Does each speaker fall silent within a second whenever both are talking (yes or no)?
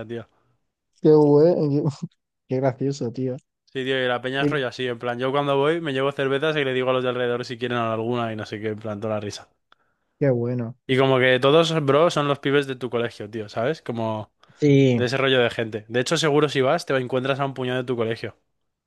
yes